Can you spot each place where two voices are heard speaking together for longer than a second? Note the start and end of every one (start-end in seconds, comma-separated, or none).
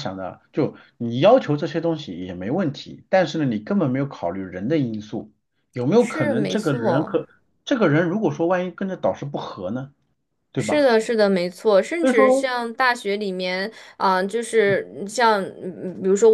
6.0-7.2